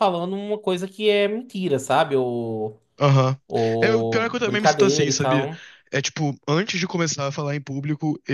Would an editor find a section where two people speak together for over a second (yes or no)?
yes